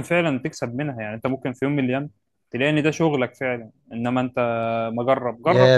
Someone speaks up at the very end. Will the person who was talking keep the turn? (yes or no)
no